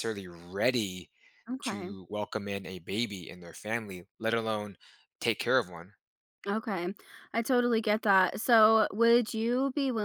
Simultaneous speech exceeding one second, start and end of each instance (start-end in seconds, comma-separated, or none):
none